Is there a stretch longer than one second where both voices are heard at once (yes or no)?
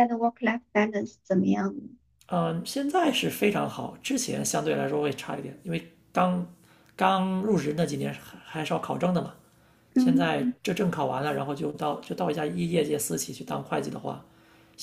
no